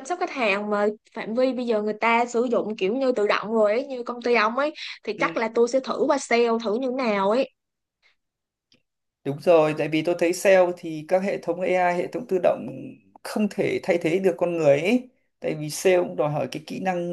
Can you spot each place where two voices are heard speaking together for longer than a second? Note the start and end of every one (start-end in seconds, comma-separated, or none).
none